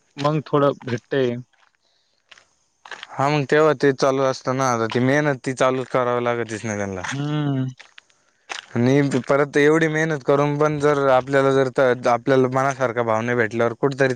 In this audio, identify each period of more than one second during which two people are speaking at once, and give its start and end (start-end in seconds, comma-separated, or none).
none